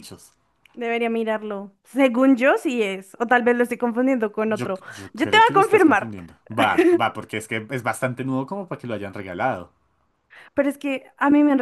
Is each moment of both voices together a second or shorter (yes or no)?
no